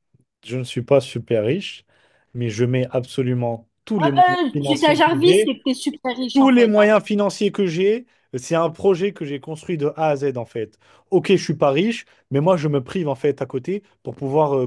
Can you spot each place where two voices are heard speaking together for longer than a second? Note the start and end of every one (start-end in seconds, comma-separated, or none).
4.0-5.6